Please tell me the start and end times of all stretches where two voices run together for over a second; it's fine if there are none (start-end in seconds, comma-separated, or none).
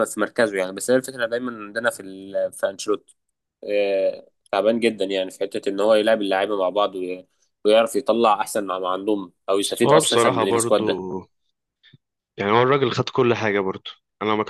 9.6-10.8